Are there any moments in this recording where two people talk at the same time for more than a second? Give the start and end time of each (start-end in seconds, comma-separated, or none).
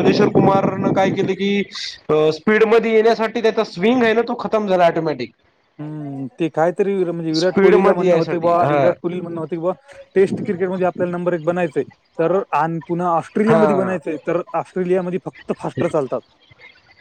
7.4-8.8